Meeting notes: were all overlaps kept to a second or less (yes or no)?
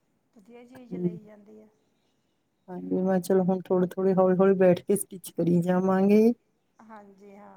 yes